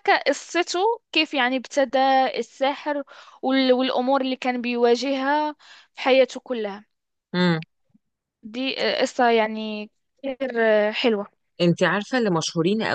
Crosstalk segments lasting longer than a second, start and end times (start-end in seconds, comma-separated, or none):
none